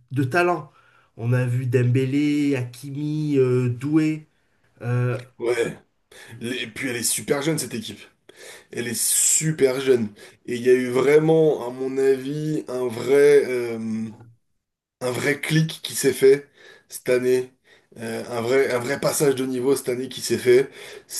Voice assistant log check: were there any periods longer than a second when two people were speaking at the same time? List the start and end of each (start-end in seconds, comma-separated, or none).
none